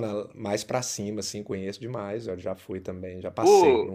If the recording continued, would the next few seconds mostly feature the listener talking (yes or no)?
yes